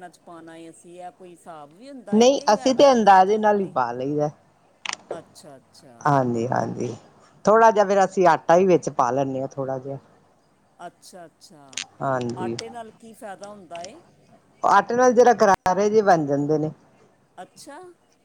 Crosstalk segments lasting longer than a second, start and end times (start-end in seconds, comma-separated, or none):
2.1-3.8